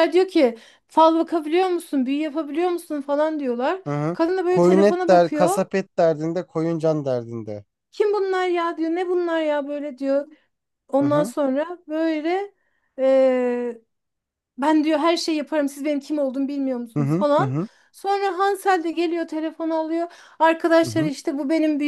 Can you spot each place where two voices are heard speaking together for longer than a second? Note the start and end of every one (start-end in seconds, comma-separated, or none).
3.9-5.6